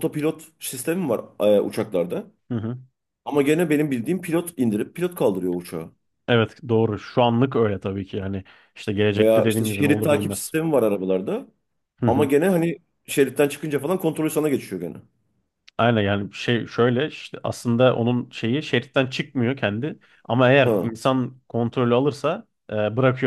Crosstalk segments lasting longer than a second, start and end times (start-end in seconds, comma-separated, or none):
9.2-10.5